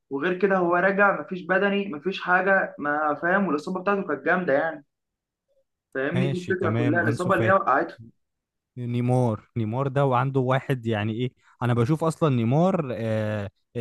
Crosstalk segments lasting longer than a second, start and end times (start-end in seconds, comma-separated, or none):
6.1-7.6